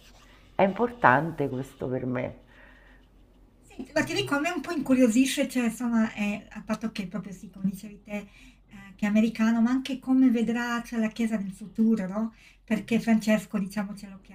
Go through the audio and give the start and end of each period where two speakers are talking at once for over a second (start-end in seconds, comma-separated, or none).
none